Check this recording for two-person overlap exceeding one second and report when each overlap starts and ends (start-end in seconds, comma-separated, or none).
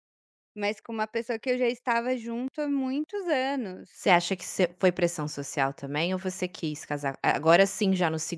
none